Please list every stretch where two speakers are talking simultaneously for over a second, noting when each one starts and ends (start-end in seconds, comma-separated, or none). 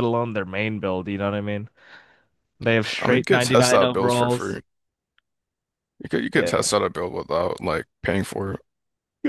3.0-4.6